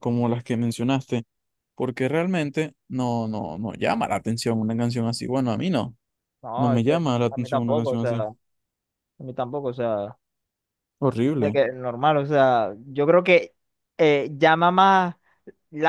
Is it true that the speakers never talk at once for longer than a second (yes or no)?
no